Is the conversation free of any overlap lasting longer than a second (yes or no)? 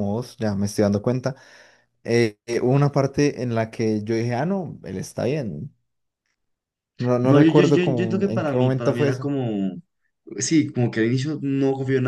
no